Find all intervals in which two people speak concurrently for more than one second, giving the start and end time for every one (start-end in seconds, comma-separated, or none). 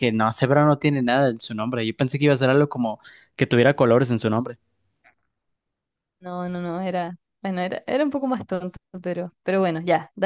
none